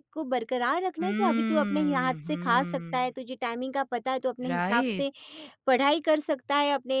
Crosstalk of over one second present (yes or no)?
yes